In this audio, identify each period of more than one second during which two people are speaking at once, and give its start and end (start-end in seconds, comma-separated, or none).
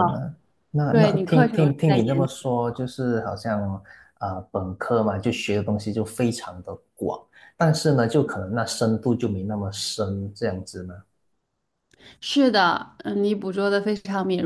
0.9-2.2